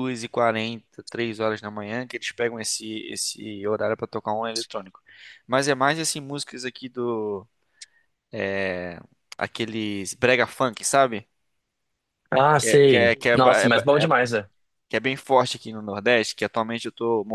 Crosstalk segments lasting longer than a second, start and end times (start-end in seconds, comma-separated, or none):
12.6-14.1